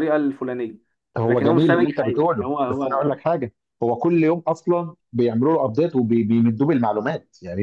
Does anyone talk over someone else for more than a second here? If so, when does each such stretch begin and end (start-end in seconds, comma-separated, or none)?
1.2-3.1